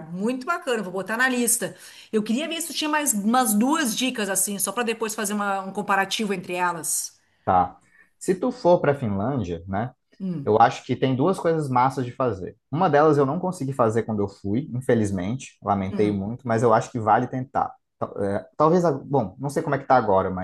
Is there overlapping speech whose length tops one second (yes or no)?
no